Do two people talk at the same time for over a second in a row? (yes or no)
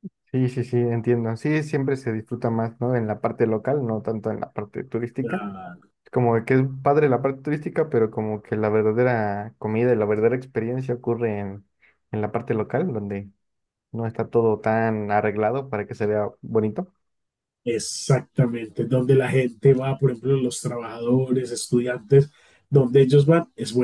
no